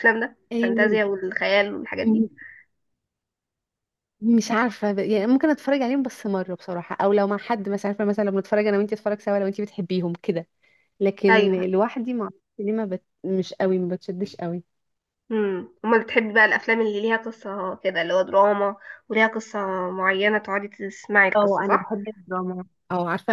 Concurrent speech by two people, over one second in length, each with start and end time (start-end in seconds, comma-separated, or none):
none